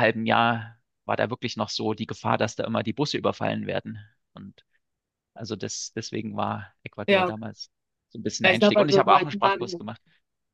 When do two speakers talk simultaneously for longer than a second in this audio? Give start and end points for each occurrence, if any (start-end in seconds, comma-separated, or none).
8.4-9.8